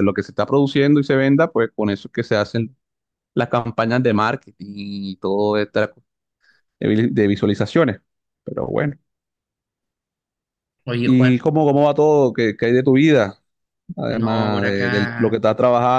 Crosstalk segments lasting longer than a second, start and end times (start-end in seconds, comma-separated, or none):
14.1-15.4